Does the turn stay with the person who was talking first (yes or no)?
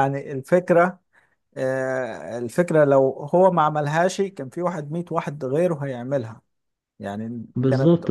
no